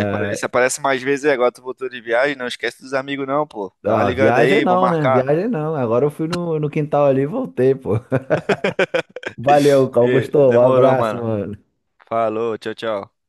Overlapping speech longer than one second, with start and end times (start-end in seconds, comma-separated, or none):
3.9-5.2, 10.0-11.3